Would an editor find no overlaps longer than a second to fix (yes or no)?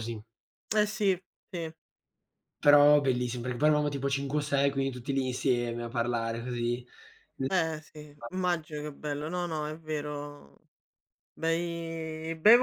yes